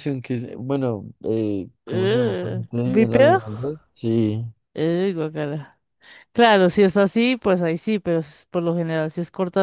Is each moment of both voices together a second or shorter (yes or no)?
no